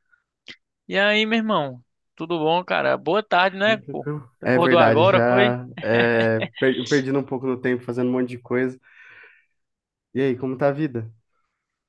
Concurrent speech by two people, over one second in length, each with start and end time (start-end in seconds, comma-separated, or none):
3.6-5.5